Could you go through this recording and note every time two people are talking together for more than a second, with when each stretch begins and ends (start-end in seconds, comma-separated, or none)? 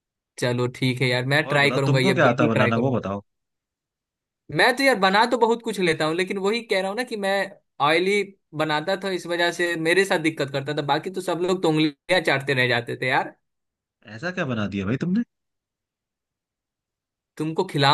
1.4-3.0